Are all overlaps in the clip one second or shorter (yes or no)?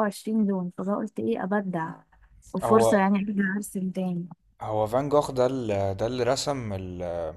yes